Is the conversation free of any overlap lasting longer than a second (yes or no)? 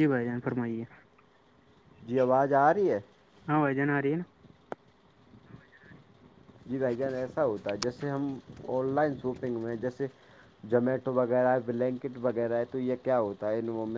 yes